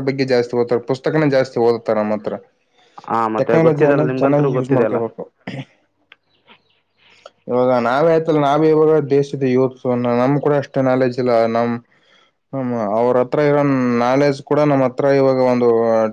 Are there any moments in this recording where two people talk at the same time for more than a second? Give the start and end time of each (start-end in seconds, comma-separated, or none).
3.1-5.0